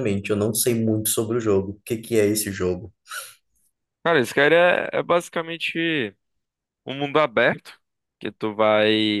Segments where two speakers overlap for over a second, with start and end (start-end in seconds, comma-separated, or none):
none